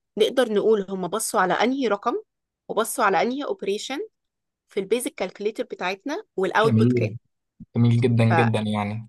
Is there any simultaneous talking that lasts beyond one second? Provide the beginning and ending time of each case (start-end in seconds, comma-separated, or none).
none